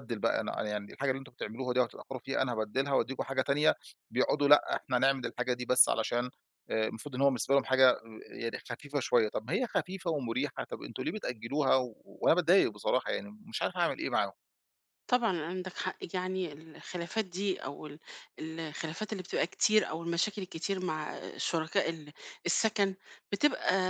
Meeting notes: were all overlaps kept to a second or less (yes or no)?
yes